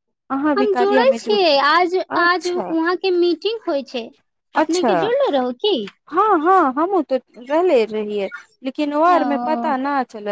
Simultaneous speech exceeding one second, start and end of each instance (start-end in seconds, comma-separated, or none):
0.6-2.7